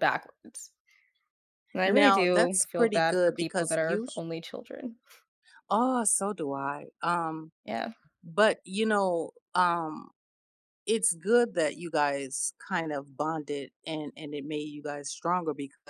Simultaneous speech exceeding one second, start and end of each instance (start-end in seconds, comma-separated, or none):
1.9-4.2